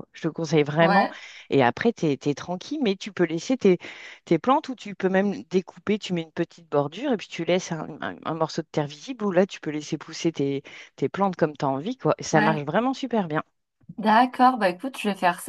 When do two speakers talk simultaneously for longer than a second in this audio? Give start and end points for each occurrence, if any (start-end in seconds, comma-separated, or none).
none